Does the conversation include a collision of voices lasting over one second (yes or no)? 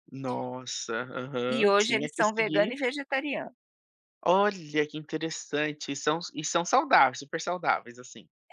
yes